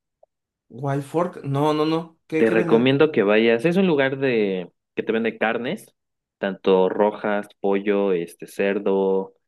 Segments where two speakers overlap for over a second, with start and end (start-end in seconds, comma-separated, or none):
none